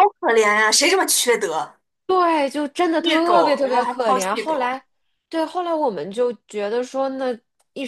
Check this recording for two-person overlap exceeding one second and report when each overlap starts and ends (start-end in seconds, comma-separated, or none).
3.0-4.8